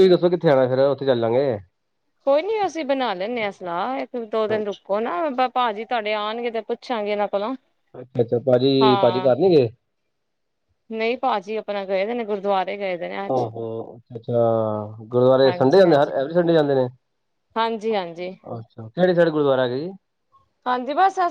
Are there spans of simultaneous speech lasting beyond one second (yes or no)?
no